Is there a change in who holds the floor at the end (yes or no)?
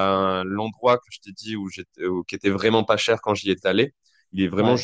no